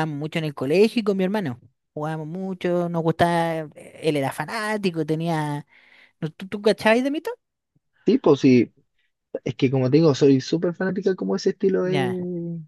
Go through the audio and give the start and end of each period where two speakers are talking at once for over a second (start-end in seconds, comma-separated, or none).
none